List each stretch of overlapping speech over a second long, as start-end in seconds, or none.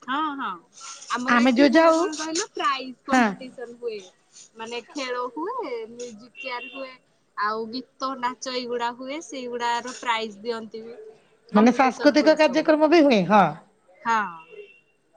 11.5-13.0